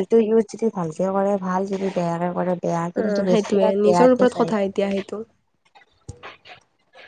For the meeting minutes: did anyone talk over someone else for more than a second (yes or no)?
yes